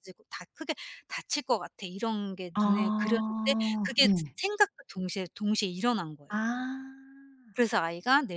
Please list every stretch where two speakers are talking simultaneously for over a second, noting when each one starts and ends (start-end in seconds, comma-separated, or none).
2.5-4.4